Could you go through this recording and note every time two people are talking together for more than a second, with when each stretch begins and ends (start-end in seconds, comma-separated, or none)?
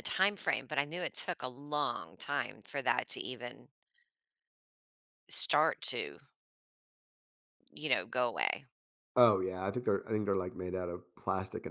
none